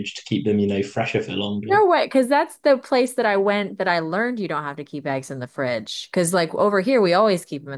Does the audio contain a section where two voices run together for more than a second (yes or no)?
no